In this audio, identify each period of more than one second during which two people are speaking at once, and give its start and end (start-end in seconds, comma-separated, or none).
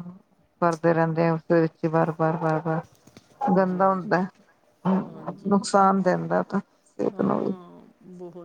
none